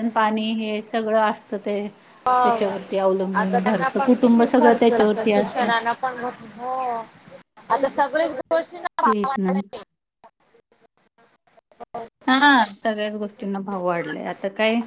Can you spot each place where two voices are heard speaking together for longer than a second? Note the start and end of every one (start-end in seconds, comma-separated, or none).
3.4-5.7